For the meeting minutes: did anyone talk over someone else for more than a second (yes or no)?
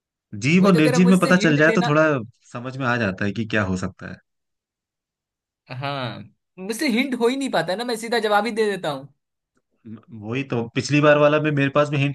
yes